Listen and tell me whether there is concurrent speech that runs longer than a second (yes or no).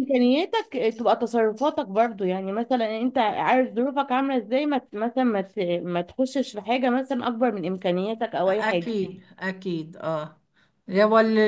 no